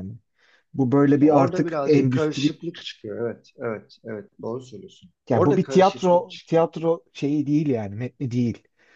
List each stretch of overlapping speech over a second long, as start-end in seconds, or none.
1.1-2.5, 5.3-6.7